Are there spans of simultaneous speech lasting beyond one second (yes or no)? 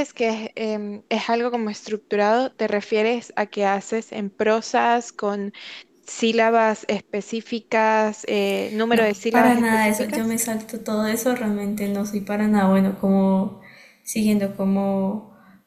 yes